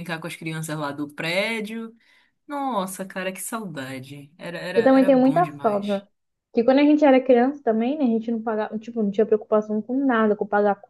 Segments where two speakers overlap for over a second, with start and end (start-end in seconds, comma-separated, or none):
4.8-6.0